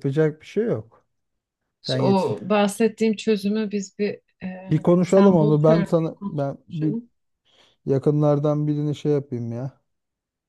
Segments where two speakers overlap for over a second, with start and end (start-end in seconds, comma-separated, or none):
4.7-7.0